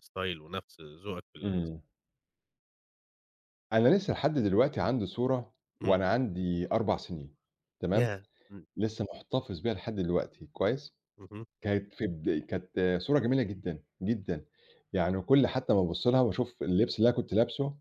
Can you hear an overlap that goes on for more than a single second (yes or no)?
no